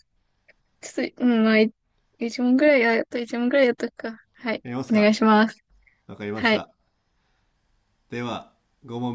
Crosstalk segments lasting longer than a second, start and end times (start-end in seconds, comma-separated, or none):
none